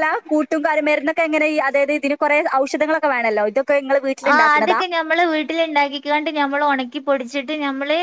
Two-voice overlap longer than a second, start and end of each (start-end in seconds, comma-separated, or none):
none